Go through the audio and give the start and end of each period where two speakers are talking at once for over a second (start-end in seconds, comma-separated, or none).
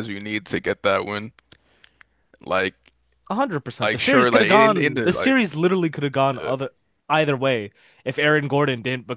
3.8-5.3